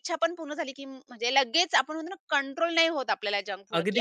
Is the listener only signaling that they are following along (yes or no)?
no